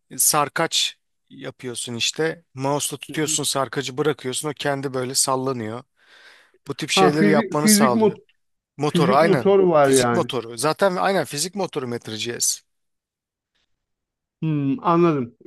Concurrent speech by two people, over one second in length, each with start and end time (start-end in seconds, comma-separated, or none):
6.9-8.2, 8.9-10.3